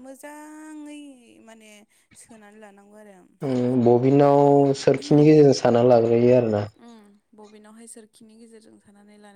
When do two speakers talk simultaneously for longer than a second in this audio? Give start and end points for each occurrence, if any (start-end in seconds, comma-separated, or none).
none